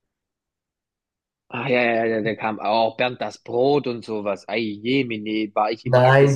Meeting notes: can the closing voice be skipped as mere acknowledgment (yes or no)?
no